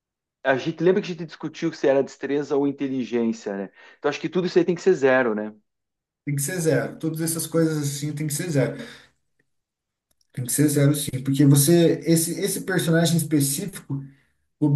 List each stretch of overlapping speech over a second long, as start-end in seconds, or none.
none